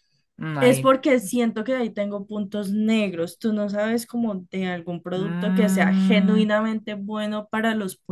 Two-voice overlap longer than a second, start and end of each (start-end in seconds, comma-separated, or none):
5.2-6.4